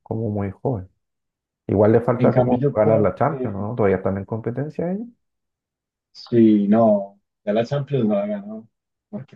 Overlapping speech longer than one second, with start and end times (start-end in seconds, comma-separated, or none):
2.2-3.7